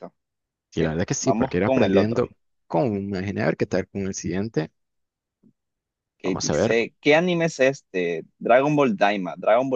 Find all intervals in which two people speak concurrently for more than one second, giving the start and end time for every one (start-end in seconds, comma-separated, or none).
0.8-2.2